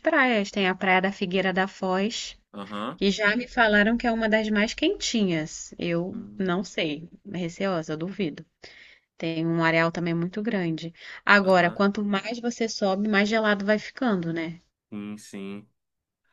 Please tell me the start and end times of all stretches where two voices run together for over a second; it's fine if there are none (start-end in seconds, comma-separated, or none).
none